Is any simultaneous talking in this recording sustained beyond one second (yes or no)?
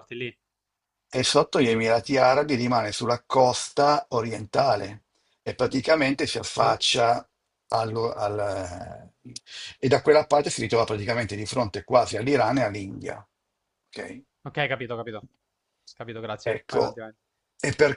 no